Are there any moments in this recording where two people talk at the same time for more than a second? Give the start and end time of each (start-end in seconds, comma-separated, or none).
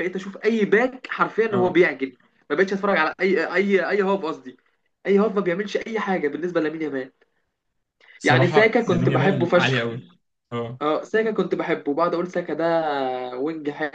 8.2-9.9